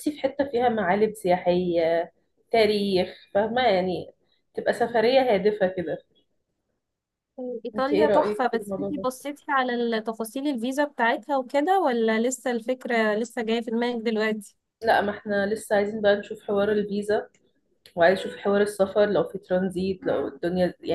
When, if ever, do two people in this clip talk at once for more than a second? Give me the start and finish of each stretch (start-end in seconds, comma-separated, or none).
7.8-9.1